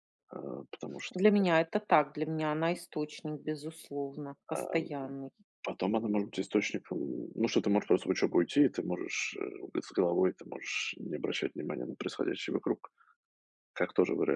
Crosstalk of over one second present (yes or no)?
no